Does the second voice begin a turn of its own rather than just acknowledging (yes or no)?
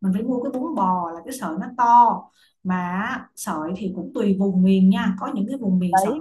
yes